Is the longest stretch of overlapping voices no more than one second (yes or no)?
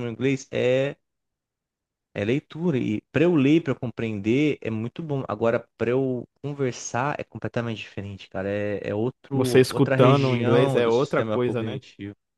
no